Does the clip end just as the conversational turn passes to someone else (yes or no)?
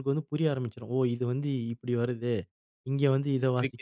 yes